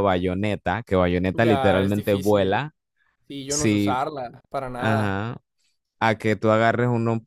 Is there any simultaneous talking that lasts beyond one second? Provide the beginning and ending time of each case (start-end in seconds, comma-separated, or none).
1.3-2.6